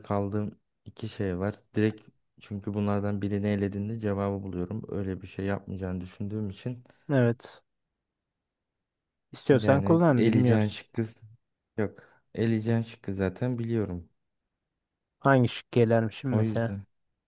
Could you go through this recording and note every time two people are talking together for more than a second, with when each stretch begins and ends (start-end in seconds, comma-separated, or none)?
9.5-10.8